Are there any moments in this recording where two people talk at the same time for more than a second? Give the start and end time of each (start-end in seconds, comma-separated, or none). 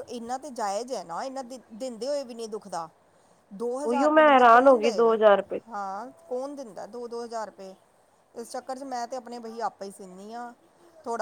3.9-5.2